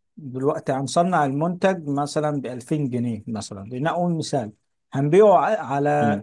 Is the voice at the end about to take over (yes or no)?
no